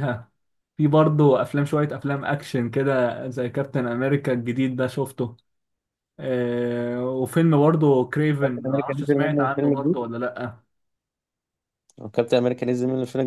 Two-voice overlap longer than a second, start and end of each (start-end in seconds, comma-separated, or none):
8.4-10.0